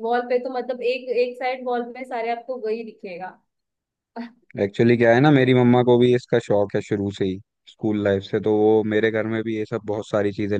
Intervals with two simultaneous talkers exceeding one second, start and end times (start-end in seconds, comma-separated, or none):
none